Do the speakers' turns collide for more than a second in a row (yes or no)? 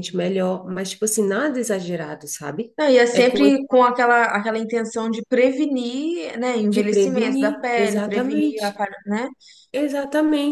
yes